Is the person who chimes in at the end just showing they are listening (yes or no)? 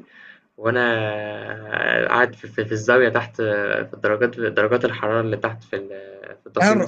no